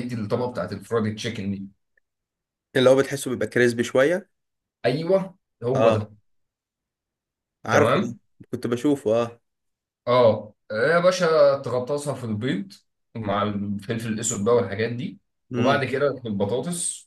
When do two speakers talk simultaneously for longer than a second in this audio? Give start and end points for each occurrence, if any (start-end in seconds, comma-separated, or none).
none